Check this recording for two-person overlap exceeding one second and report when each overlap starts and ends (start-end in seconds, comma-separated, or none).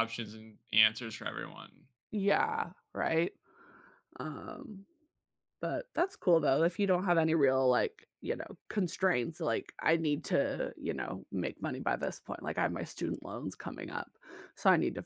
none